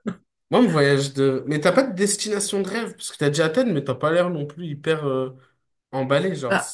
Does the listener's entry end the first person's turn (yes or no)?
no